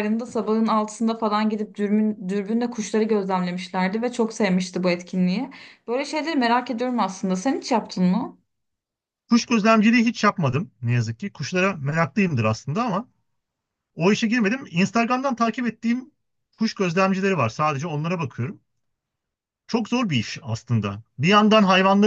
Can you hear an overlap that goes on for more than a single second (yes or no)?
no